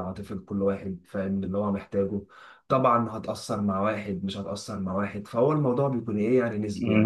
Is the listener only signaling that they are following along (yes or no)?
no